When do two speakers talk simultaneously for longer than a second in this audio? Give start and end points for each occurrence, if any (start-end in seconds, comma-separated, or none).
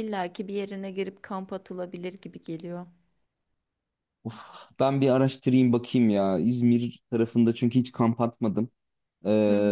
none